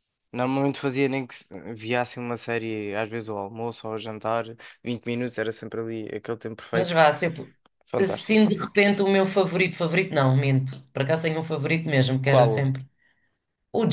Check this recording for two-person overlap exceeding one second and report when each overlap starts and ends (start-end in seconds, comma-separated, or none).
none